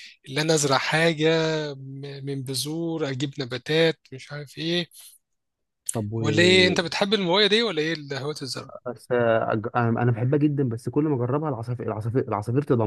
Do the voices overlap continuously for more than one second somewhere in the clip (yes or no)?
no